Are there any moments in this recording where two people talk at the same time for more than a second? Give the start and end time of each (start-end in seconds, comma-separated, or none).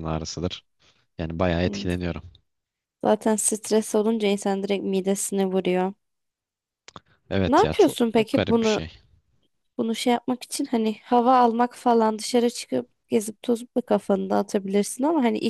7.5-8.8